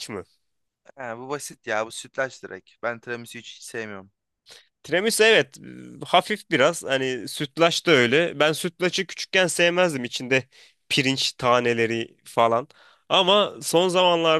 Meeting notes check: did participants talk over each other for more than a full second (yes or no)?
no